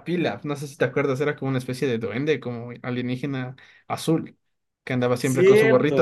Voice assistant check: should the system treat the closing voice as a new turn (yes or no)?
yes